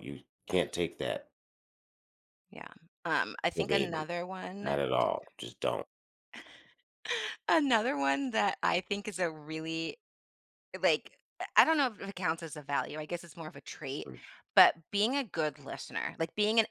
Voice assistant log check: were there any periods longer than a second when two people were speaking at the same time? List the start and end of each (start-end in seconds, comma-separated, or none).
none